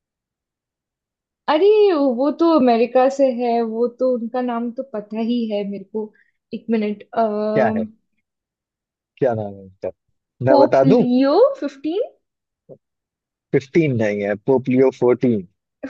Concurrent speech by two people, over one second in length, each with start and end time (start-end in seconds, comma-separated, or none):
none